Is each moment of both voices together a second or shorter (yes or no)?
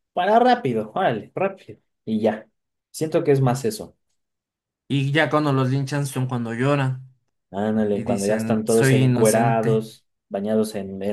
no